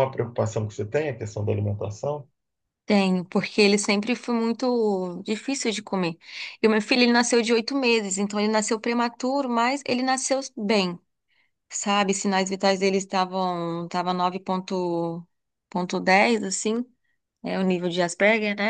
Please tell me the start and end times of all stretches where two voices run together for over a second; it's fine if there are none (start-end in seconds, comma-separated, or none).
none